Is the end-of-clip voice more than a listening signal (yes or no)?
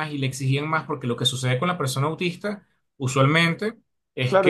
yes